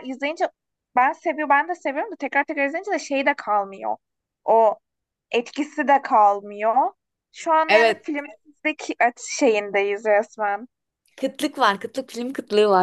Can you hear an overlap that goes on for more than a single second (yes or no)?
no